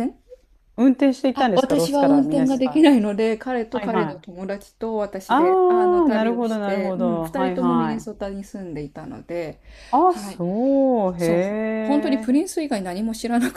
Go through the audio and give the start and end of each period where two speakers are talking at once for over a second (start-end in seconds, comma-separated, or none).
1.3-2.9, 5.3-8.3